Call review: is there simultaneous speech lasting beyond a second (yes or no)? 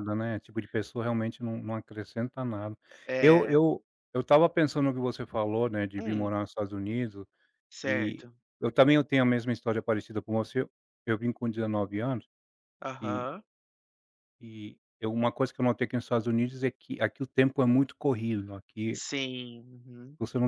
no